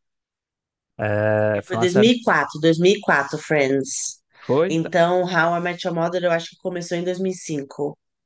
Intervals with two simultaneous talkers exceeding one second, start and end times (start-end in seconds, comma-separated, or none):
none